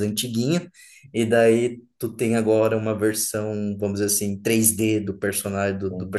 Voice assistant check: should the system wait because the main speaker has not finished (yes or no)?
yes